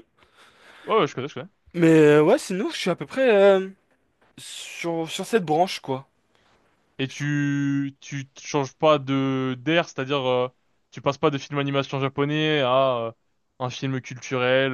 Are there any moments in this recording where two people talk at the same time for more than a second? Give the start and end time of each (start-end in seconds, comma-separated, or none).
none